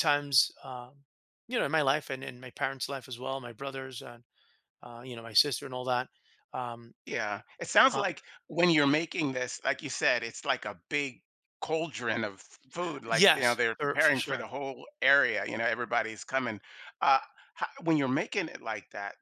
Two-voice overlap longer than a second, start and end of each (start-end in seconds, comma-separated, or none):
13.1-14.5